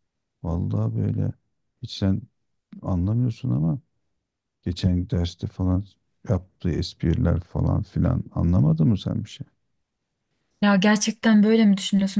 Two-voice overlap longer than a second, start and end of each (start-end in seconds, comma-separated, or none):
none